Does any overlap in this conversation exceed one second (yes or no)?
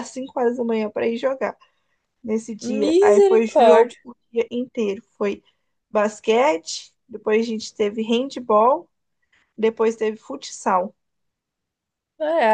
yes